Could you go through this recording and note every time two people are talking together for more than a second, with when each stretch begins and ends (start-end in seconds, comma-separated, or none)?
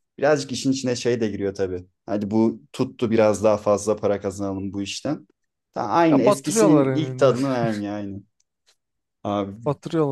6.1-7.3